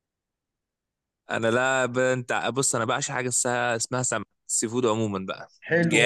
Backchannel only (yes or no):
no